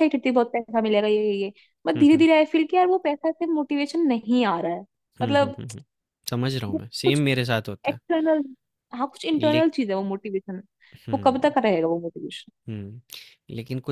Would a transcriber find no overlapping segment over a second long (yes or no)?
yes